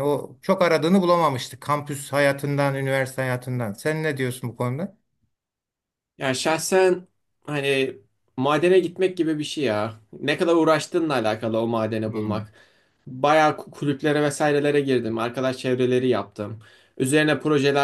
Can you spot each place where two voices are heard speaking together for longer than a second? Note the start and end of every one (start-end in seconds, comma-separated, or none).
none